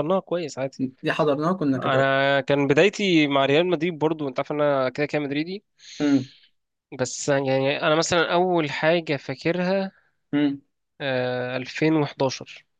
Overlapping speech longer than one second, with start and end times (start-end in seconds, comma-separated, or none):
none